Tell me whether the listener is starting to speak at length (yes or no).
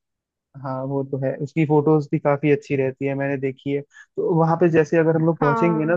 no